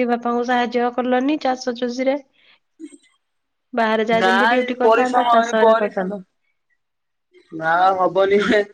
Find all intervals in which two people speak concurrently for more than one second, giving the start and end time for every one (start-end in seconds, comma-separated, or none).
4.2-6.1